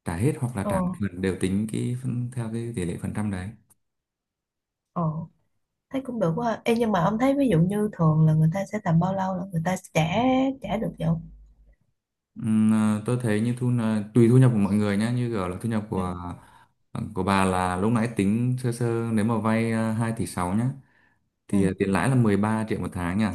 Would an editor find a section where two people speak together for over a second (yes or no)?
no